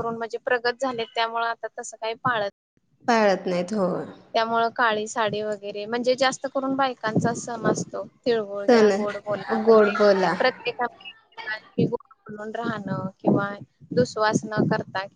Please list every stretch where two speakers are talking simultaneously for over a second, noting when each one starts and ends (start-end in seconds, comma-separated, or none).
none